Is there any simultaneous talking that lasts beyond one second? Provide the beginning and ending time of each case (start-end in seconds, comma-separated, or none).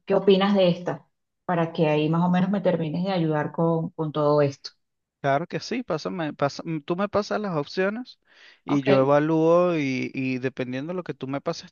none